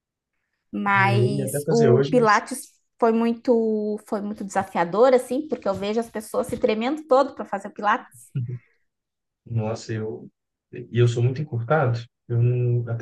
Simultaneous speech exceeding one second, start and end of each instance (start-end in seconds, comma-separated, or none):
1.0-2.4